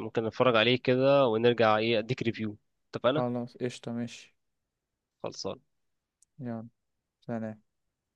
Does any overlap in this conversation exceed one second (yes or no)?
no